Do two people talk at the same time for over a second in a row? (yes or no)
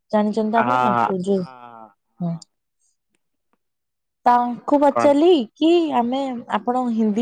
yes